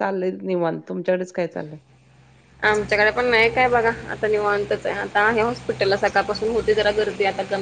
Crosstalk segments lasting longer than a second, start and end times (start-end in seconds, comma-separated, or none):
none